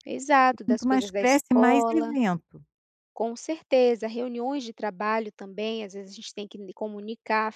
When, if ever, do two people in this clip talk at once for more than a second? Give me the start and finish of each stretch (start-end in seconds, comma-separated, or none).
0.5-2.1